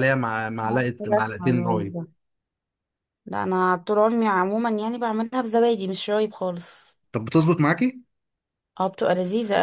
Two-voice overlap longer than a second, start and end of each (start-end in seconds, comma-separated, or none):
0.6-2.0